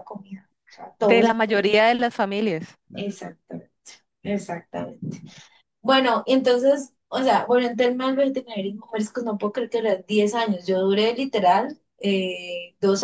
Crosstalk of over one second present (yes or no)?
no